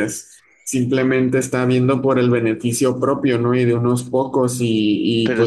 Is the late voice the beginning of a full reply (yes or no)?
no